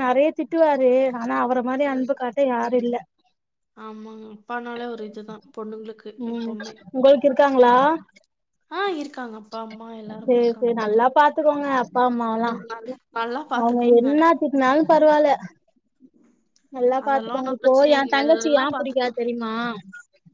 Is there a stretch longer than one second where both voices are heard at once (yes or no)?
yes